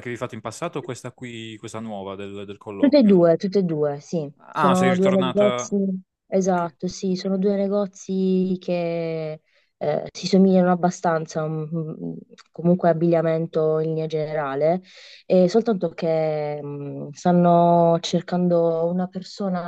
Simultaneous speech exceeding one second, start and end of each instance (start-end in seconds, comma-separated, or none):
4.4-5.8